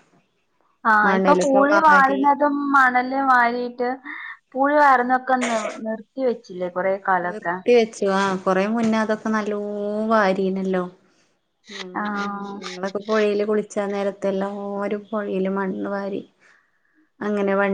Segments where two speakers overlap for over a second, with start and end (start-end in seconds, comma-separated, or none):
none